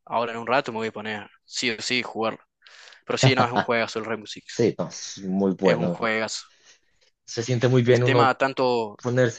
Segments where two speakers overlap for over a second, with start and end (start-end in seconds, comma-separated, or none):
none